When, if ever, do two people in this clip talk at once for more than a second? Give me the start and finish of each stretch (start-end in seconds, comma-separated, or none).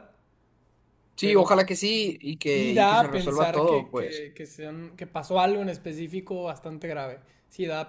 2.5-4.3